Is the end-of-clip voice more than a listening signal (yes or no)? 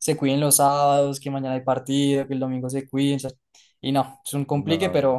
no